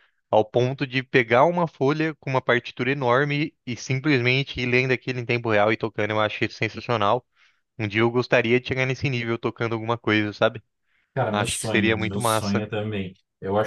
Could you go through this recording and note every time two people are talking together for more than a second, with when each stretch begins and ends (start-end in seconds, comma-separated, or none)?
11.3-12.6